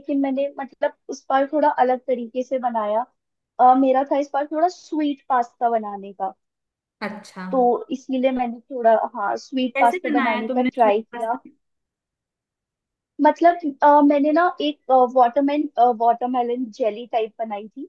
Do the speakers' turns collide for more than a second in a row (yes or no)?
yes